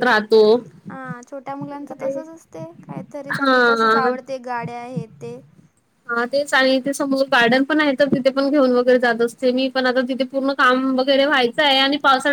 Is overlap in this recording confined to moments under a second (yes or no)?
yes